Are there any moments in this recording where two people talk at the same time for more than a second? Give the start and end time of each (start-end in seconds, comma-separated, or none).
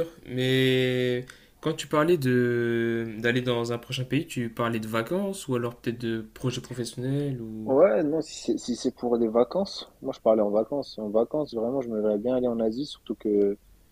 none